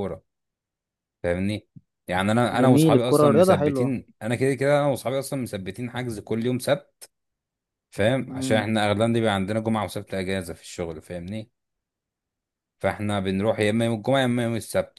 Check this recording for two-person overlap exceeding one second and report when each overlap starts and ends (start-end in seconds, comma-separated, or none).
2.5-3.9